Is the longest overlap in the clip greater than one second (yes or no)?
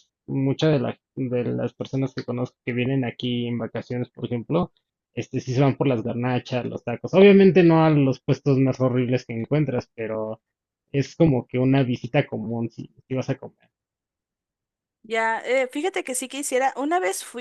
no